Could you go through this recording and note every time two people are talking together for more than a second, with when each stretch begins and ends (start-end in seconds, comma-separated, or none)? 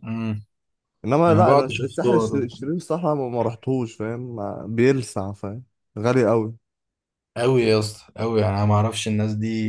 1.3-2.5